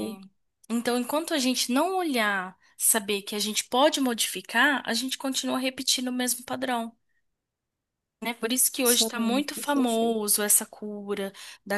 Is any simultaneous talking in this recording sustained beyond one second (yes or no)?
yes